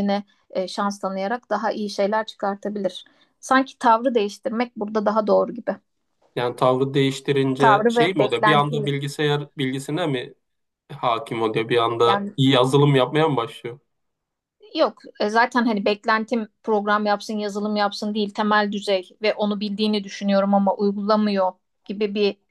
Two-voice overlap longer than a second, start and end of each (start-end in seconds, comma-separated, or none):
7.6-8.9